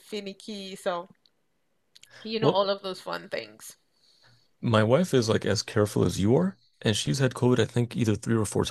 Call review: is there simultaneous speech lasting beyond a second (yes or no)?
no